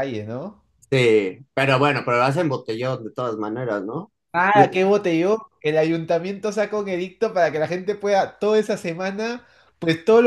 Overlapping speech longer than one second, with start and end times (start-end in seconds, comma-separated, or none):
none